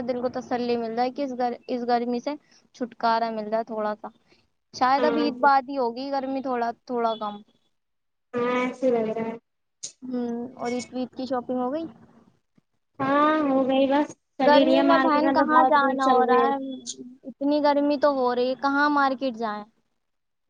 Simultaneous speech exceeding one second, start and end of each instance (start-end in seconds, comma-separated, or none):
14.5-16.4